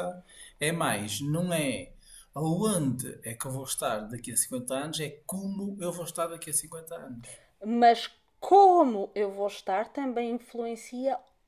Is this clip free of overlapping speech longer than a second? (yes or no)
yes